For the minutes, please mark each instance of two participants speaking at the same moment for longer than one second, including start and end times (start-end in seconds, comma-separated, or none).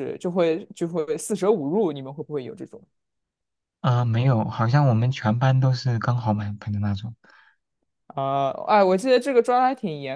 none